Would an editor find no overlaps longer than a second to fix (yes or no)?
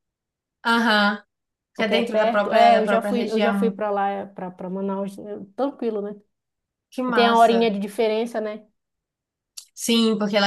no